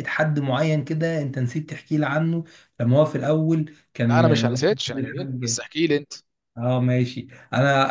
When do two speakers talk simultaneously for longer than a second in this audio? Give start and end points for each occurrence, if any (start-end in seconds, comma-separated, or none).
4.0-5.6